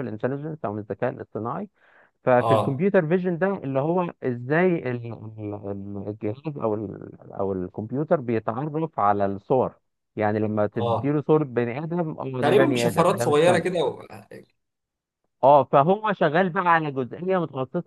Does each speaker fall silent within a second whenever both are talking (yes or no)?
no